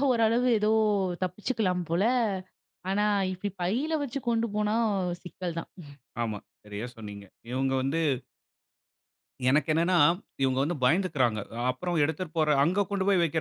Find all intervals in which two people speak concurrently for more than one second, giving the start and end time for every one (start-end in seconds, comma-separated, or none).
none